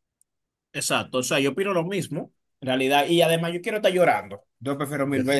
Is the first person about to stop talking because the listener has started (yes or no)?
no